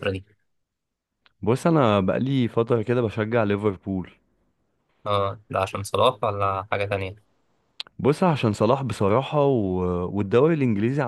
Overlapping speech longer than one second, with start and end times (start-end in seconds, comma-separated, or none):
none